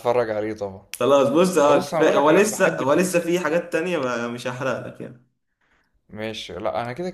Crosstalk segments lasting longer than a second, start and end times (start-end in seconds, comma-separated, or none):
1.7-3.1